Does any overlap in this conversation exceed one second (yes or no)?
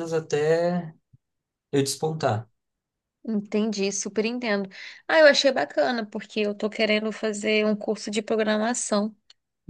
no